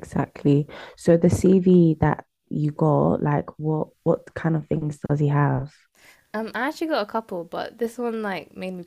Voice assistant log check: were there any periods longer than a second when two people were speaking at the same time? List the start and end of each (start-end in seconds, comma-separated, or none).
none